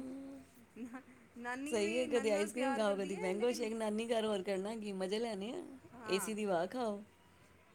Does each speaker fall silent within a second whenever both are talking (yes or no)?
no